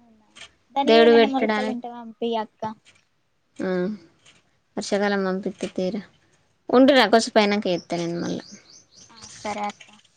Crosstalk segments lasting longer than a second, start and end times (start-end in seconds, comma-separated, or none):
none